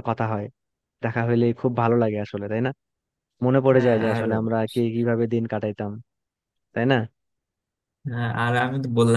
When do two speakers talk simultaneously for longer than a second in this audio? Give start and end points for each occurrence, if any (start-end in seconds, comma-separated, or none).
none